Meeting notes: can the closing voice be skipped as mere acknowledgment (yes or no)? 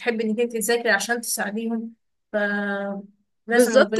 no